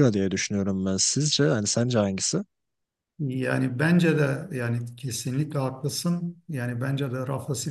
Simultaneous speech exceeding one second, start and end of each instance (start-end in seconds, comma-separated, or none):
none